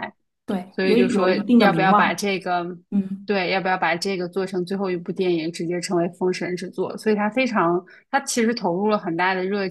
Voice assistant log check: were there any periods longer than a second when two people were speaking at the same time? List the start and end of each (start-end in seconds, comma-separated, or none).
0.7-2.3